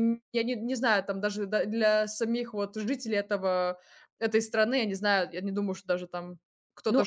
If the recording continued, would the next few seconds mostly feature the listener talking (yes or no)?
yes